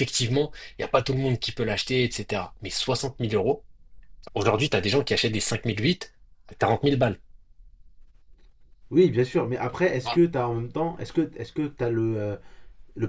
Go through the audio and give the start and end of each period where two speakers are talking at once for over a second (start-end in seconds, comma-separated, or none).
none